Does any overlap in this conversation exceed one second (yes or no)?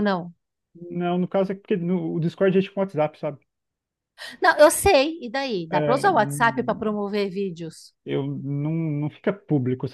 no